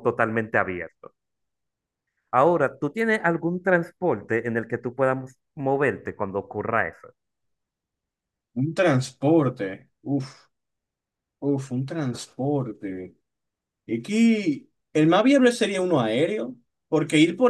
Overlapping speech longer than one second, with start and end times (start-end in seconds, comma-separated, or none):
none